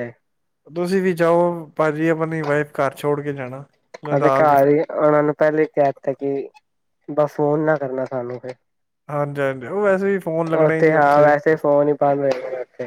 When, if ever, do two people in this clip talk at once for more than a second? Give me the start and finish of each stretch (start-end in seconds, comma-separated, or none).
none